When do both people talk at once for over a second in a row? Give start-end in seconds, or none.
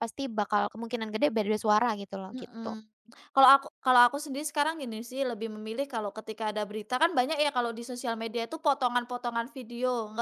none